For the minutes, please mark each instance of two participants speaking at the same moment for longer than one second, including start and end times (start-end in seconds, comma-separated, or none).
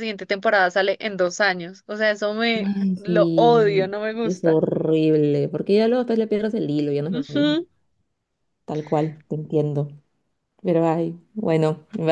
2.6-4.6